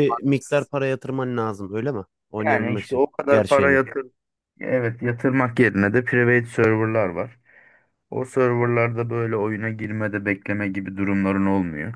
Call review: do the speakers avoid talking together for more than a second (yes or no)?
no